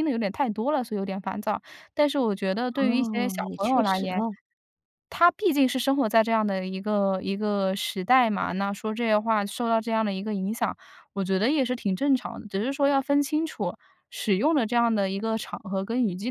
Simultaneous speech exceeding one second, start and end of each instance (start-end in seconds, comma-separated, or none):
2.8-4.2